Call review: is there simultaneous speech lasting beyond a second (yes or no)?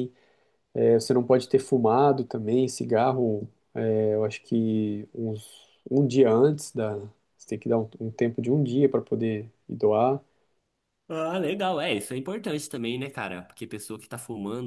no